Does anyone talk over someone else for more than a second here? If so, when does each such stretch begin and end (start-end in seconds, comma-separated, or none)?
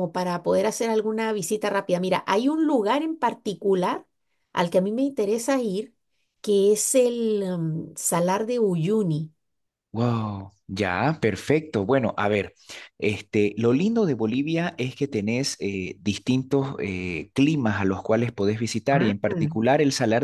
none